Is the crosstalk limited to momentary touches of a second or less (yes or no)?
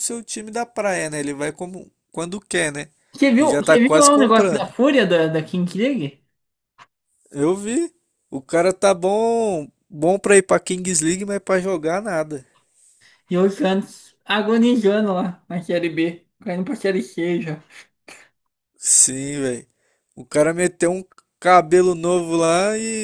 no